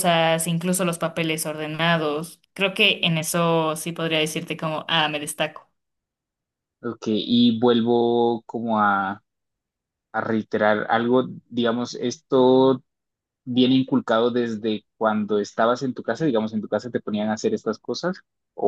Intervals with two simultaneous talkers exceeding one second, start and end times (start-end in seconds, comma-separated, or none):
none